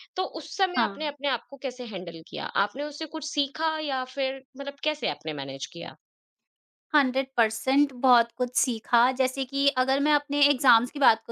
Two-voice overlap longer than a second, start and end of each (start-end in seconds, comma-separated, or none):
none